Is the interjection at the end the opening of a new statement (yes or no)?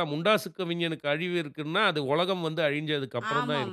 yes